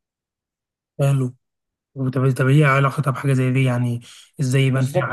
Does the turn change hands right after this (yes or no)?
yes